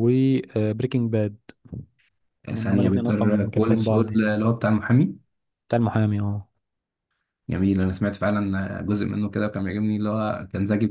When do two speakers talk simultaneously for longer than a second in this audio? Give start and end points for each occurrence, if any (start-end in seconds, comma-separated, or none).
2.5-4.3